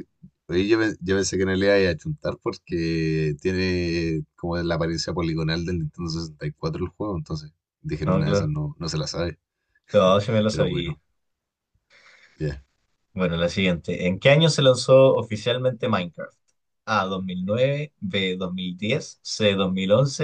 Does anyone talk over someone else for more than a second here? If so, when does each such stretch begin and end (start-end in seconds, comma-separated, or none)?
none